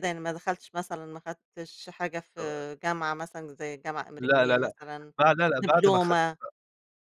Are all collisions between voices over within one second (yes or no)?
yes